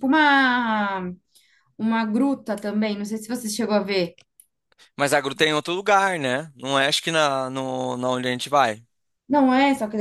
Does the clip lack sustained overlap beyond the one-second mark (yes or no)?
yes